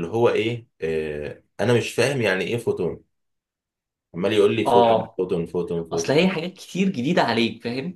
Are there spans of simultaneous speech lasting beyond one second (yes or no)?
no